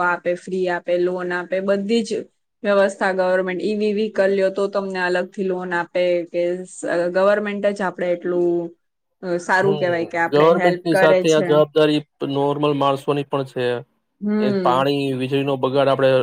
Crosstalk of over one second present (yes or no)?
yes